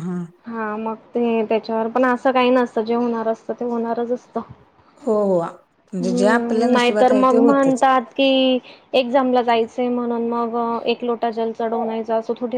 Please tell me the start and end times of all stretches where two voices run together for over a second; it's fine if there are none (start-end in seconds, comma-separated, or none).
6.0-7.8